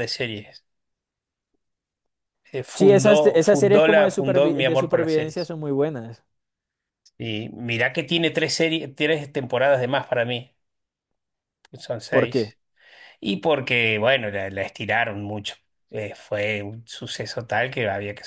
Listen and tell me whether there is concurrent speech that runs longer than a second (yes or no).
yes